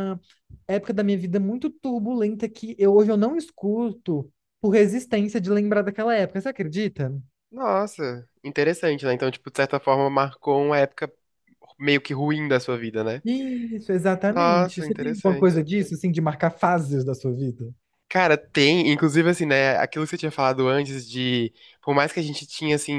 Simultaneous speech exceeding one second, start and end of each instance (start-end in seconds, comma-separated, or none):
14.3-15.6